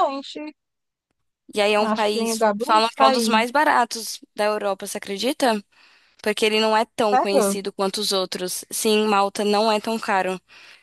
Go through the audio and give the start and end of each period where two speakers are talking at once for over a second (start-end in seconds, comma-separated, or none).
1.8-3.4